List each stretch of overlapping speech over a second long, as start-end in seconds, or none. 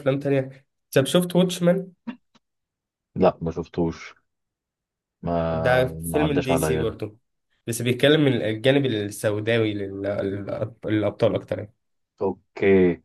5.5-7.0